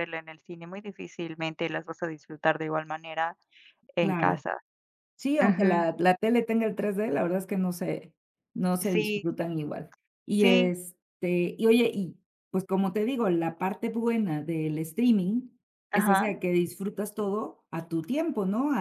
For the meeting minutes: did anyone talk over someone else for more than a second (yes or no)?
no